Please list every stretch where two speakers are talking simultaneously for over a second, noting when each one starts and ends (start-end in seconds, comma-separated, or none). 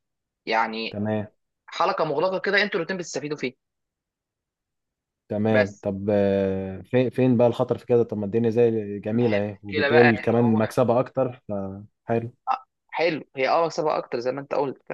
9.1-10.6